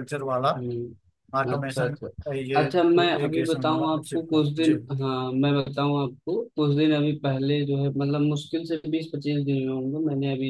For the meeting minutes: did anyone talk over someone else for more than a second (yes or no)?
yes